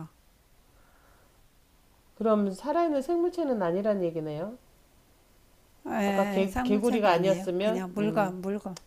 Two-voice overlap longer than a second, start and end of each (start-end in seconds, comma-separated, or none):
6.1-8.4